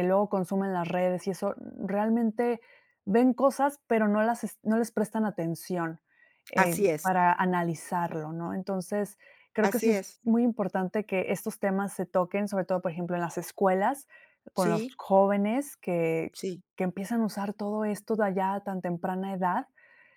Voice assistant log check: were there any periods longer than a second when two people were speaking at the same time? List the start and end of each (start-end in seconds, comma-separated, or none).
none